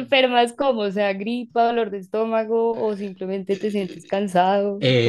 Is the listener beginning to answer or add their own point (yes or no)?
yes